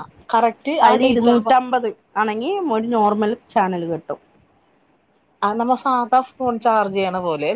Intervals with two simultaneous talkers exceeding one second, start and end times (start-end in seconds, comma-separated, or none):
none